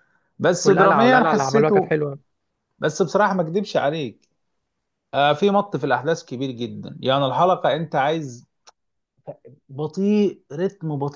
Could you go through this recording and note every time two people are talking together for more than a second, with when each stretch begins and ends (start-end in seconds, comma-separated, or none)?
0.6-2.0